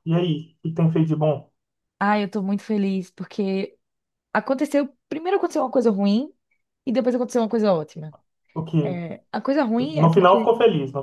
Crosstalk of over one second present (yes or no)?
no